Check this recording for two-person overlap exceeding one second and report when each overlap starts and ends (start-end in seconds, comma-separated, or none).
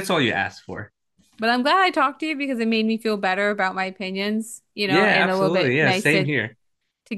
4.9-6.3